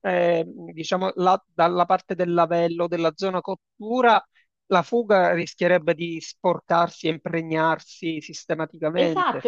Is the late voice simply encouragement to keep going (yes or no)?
no